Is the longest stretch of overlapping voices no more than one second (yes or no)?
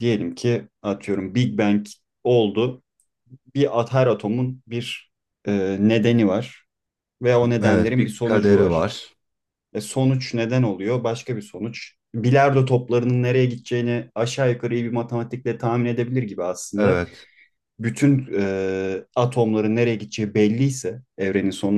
no